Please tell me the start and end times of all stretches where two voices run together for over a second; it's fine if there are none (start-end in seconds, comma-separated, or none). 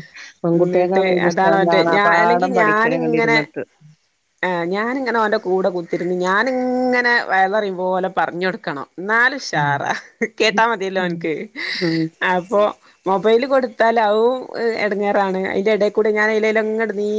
0.6-3.4